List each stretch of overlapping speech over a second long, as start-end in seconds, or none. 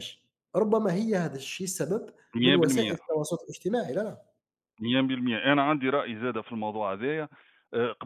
none